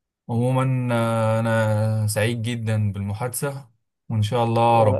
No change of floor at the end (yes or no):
yes